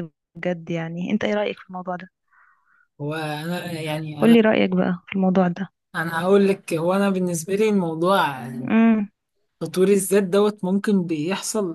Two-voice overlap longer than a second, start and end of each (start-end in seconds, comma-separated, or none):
none